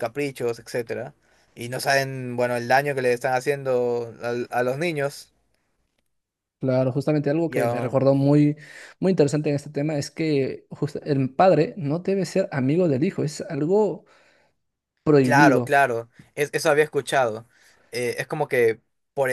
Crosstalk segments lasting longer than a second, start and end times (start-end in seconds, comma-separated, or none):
none